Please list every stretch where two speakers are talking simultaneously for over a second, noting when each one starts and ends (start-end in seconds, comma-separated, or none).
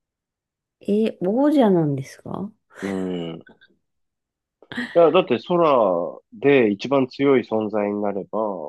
none